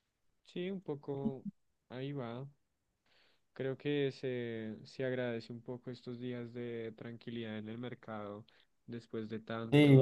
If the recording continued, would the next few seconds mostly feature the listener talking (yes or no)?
yes